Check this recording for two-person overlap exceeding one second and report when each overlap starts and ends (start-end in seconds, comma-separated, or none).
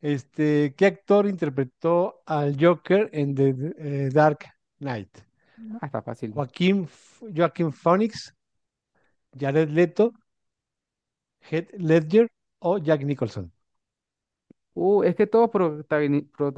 none